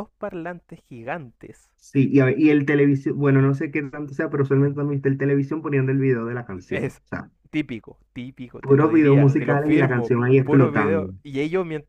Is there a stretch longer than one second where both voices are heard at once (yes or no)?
yes